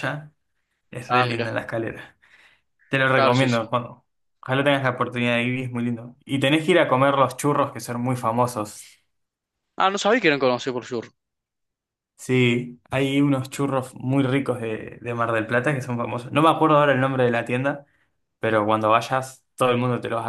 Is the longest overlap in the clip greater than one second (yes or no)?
no